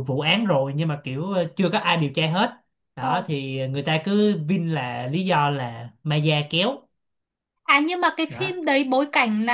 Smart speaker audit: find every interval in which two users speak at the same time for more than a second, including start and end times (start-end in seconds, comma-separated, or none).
none